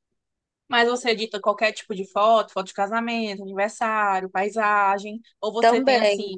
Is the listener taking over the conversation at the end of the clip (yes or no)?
no